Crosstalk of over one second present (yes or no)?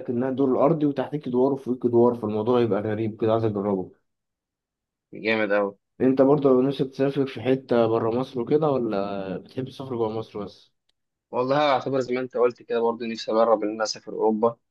no